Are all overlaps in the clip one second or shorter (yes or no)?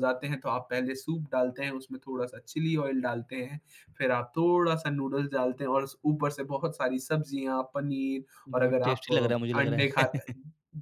no